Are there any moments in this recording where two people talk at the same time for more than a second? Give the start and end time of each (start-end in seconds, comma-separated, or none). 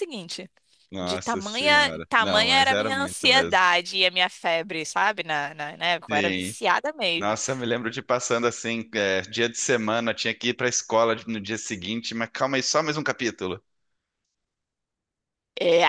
1.0-3.6